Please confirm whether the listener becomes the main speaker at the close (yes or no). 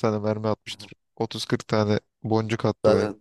yes